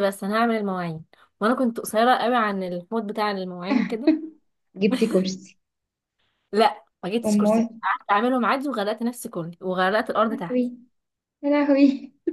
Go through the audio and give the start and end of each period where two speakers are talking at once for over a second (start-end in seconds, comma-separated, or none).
none